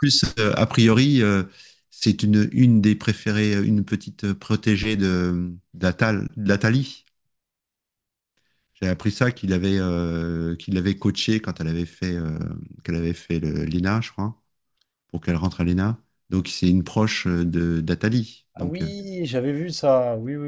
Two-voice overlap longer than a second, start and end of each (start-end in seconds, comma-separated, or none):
none